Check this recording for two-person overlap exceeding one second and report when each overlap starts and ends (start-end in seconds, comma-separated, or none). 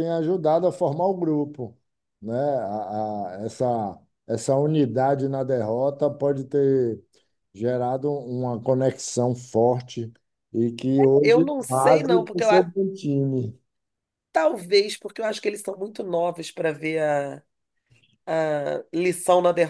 11.2-12.7